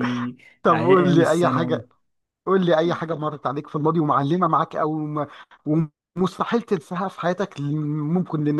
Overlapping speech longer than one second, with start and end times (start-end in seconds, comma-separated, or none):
0.6-1.8